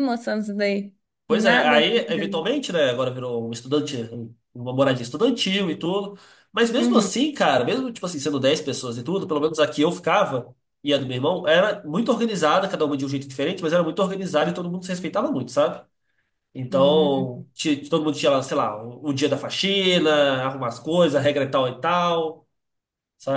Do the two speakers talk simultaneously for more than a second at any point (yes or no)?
no